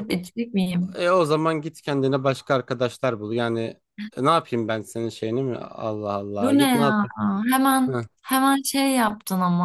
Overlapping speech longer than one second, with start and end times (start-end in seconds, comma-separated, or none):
none